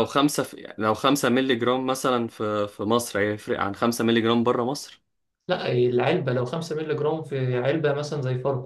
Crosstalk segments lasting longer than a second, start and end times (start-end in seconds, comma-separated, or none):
none